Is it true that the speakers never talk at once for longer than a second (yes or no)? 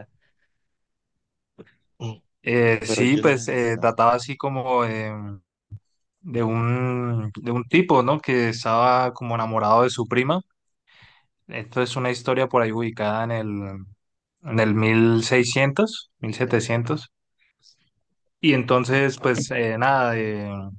no